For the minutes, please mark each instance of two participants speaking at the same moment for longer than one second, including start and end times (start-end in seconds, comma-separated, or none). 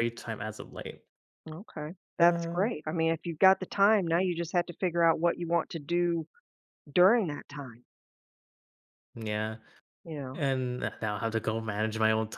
none